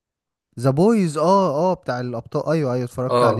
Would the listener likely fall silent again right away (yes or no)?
no